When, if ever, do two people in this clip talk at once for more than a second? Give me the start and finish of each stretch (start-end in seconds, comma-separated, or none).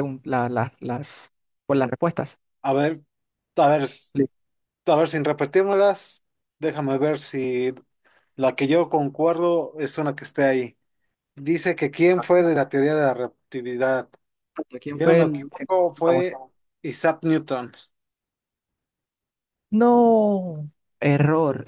14.9-16.3